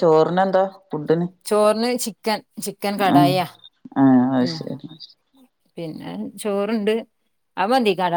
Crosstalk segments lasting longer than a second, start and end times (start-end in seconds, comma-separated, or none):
none